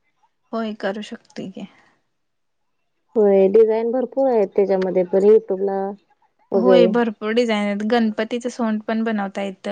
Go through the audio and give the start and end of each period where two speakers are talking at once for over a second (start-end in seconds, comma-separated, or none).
none